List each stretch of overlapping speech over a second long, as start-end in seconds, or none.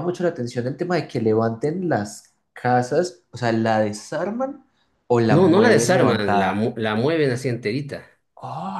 5.3-6.7